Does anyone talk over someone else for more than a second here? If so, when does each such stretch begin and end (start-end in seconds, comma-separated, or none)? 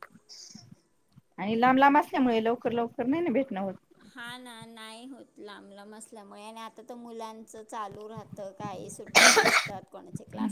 none